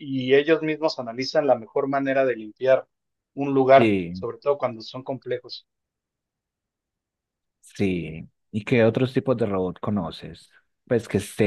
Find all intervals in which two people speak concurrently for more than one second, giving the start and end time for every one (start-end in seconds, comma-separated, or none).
none